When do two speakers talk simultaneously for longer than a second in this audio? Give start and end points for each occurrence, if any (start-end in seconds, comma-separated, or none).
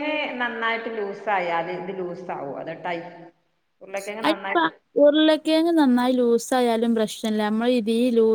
none